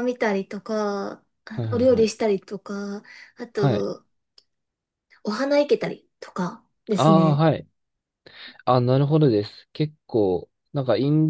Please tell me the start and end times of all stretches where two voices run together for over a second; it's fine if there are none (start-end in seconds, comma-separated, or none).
none